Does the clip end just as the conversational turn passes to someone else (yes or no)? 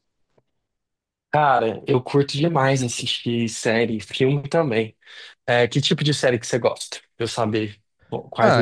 yes